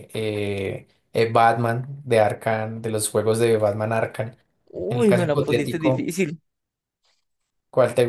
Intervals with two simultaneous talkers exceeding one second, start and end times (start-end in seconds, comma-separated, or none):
4.9-6.1